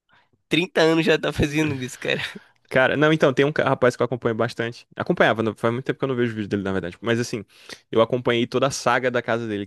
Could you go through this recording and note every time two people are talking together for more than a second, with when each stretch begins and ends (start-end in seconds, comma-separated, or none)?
none